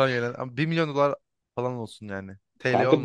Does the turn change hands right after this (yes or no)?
yes